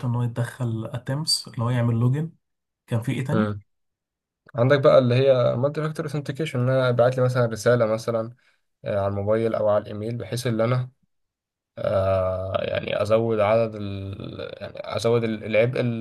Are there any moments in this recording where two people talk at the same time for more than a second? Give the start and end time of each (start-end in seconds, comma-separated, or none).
none